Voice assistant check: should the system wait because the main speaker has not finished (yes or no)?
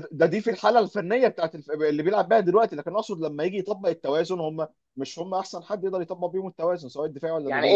no